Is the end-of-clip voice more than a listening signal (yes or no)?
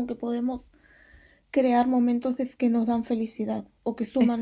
no